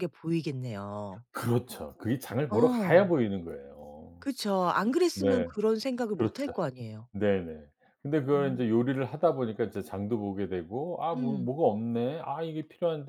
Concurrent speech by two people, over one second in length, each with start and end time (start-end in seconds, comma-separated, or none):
none